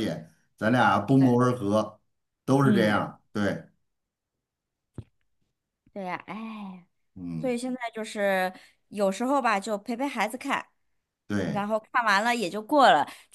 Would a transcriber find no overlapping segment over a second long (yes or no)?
yes